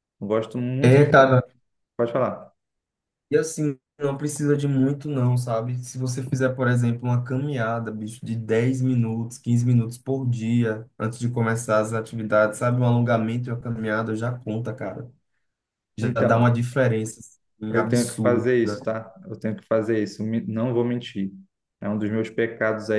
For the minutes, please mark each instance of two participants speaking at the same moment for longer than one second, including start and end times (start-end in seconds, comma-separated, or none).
17.7-18.9